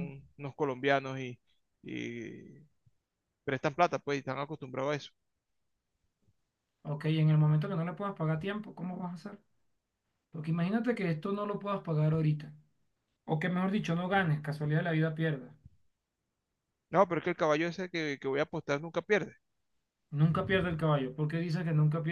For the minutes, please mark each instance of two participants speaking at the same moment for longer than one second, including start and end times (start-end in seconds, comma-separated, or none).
none